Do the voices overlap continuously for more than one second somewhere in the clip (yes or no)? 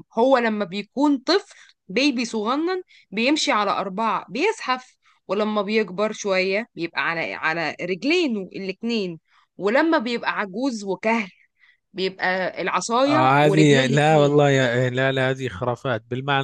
yes